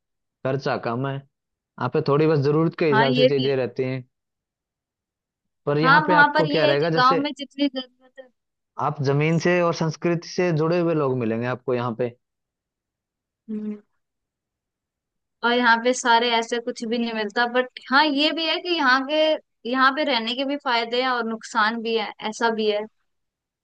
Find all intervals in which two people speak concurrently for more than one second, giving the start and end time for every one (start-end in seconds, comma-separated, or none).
5.8-7.3